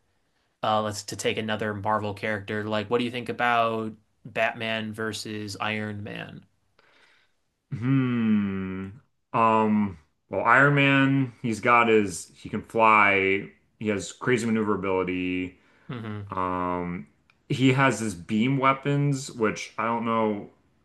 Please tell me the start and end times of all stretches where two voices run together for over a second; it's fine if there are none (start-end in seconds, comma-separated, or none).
none